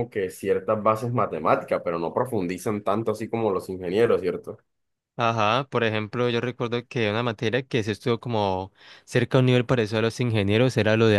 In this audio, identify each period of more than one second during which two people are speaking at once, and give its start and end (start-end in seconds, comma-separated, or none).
none